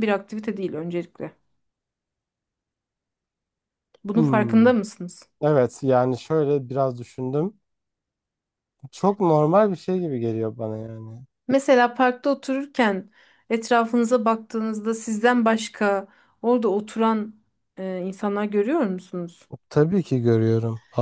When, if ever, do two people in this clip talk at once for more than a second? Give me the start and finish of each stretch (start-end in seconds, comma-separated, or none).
none